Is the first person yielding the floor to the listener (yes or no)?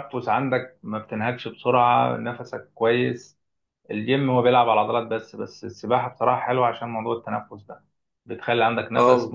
no